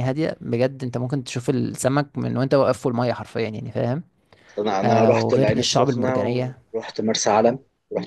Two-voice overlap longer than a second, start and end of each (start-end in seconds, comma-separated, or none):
4.8-6.2